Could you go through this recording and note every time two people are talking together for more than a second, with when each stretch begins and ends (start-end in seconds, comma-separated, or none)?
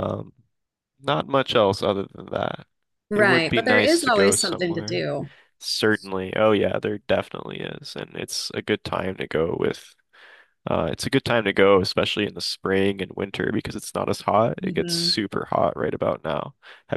3.1-5.1